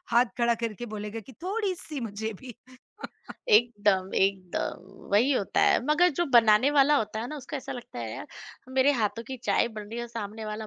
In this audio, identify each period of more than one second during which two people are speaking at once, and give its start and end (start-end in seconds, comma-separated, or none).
none